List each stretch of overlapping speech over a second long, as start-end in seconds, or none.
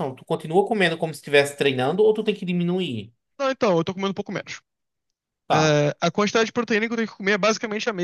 none